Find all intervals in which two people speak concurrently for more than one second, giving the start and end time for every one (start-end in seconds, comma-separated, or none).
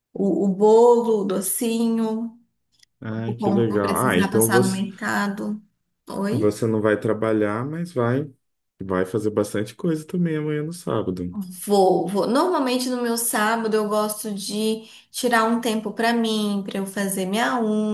3.2-4.8